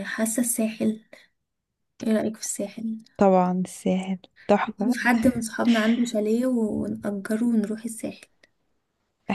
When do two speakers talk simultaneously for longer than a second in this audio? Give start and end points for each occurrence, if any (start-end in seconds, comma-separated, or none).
none